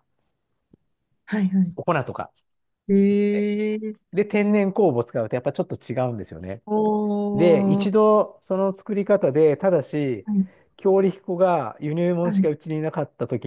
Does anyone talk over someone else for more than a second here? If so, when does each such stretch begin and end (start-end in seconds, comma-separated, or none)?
none